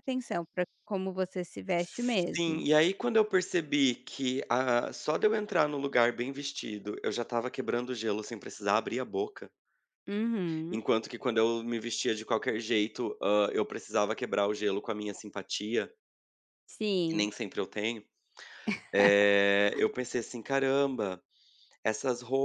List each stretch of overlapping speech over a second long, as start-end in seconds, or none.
none